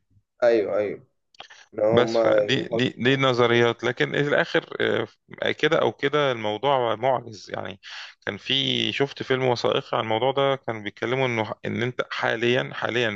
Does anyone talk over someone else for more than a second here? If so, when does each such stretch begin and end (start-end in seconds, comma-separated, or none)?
1.9-3.7